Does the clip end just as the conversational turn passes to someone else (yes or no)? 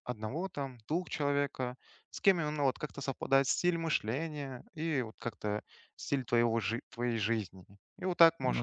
no